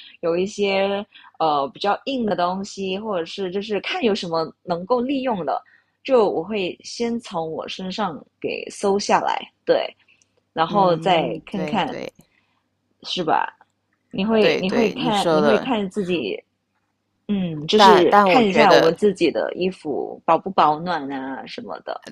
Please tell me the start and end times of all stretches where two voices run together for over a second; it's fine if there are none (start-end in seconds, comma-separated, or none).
10.7-12.0, 14.4-15.7, 17.7-18.9